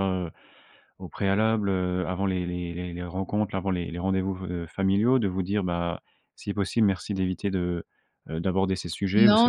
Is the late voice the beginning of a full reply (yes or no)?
yes